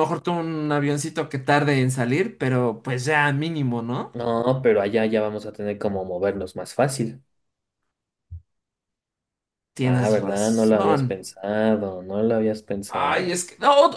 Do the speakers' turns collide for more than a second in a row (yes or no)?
yes